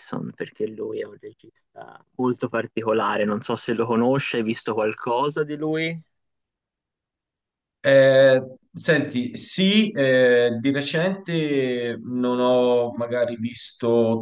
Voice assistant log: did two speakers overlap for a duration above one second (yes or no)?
no